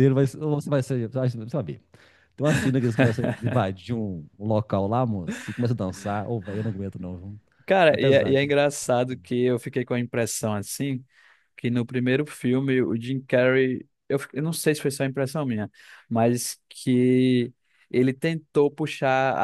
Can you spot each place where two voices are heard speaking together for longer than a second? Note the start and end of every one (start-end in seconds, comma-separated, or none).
none